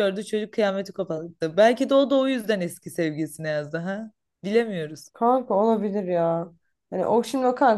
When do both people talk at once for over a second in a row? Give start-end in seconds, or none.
none